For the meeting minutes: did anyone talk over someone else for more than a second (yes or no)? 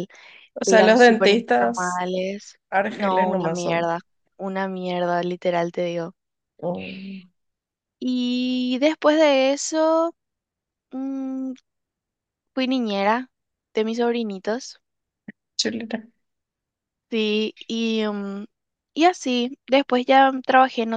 yes